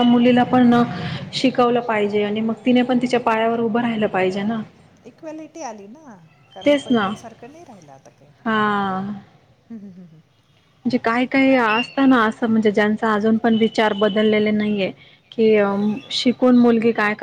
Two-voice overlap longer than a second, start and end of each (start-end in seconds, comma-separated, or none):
none